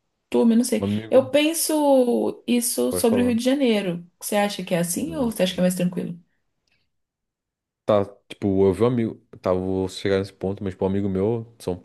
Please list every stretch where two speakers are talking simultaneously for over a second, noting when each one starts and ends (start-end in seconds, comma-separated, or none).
none